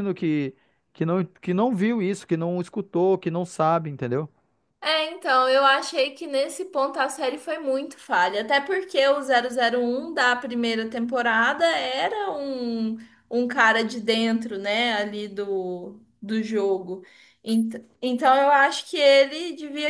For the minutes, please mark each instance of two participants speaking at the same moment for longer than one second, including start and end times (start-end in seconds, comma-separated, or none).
none